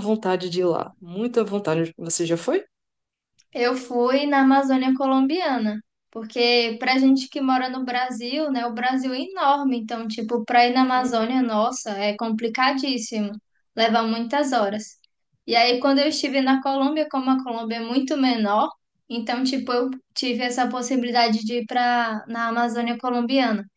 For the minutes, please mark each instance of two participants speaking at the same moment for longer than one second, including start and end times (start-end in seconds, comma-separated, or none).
none